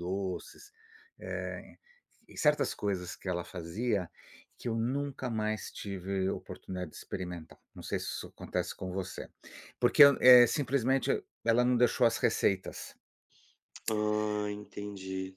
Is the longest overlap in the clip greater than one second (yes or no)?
no